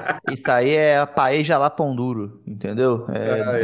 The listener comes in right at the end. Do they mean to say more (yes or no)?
no